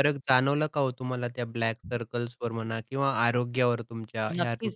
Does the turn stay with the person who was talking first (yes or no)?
no